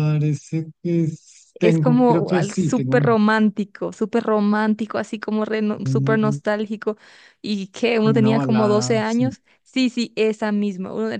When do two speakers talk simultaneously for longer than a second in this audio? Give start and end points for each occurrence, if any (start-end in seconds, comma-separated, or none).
1.6-3.1, 7.9-9.3